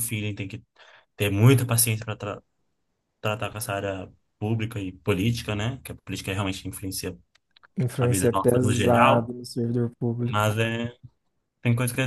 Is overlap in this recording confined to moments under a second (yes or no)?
no